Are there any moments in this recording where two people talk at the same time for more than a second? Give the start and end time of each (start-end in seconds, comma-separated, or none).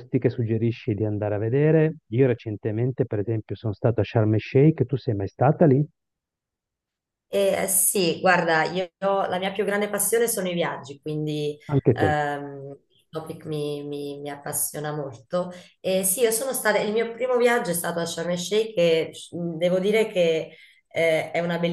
none